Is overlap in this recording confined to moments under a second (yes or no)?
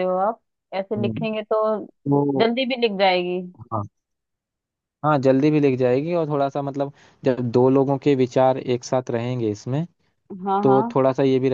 yes